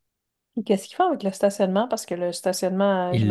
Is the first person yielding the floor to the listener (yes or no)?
yes